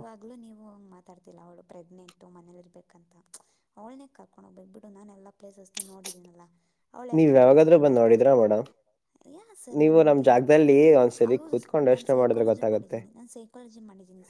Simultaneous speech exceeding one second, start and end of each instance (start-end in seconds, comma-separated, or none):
11.4-13.0